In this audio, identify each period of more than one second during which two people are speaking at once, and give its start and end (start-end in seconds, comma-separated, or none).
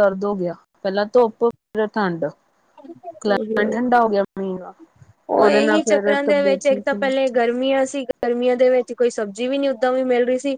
none